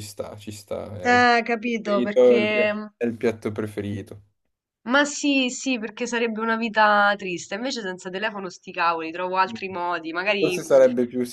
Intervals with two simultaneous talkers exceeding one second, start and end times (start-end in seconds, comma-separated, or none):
1.0-2.9